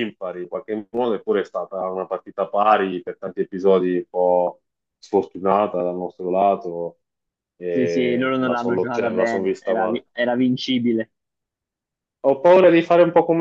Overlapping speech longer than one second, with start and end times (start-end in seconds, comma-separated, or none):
7.7-10.0